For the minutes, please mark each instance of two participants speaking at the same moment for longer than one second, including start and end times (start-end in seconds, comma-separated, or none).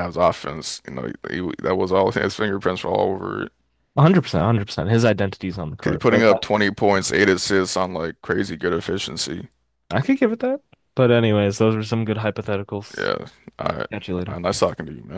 none